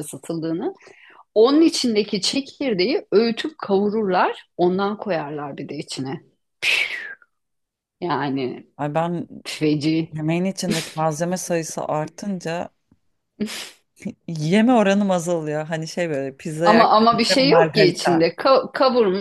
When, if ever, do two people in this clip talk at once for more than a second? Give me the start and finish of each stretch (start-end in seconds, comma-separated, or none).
16.6-18.3